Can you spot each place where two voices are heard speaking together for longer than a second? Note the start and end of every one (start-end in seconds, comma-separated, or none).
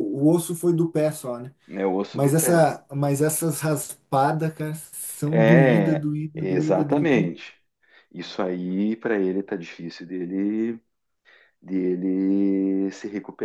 5.3-7.3